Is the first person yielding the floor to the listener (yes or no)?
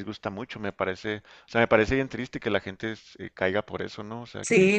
no